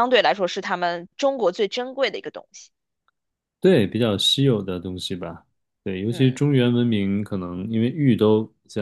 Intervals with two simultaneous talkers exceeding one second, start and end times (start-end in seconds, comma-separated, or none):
none